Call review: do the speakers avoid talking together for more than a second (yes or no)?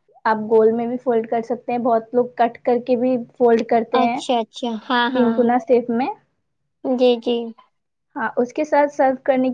yes